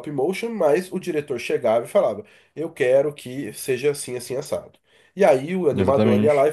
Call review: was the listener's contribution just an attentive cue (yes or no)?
yes